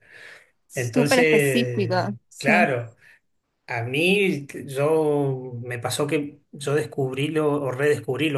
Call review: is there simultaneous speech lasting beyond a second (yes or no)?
yes